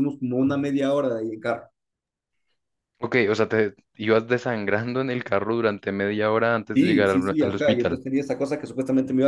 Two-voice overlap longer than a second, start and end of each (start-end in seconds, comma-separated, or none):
6.7-8.0